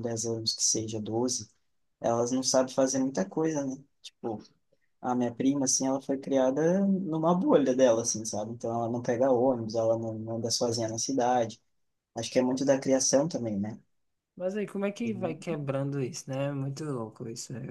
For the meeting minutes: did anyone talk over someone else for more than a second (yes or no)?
no